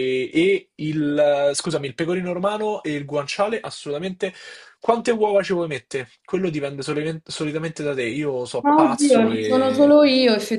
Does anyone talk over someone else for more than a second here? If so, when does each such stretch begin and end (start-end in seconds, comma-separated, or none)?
8.6-10.0